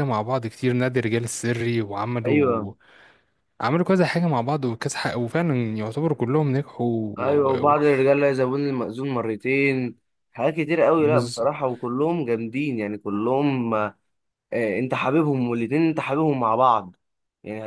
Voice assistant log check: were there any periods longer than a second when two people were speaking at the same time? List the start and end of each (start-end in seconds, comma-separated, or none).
none